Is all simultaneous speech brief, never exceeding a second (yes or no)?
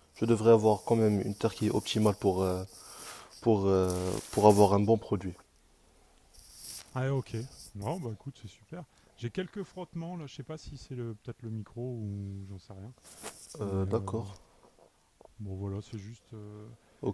yes